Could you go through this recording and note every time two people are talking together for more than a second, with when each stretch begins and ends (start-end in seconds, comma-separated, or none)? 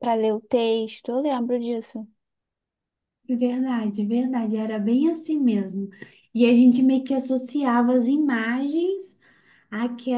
none